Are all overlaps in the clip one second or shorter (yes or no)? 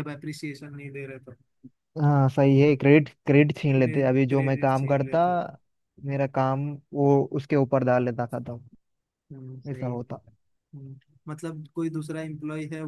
no